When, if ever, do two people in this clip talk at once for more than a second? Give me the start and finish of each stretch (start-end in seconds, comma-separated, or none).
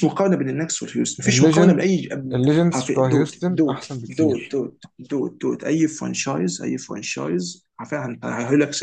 2.7-4.6